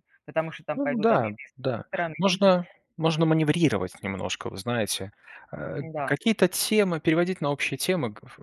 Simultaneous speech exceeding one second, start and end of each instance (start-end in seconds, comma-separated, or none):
0.7-2.7